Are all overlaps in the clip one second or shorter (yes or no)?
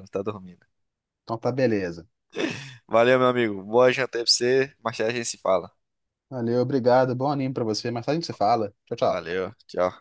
yes